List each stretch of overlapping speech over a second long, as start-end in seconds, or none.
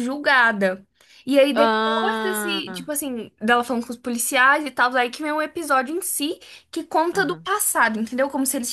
1.5-2.9